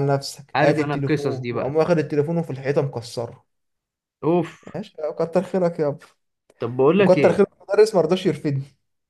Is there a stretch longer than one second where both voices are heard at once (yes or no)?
yes